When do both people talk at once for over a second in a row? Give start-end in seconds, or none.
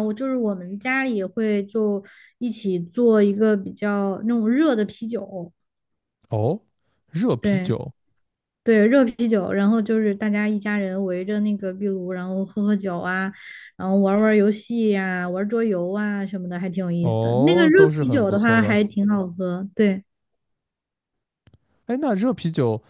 17.0-18.8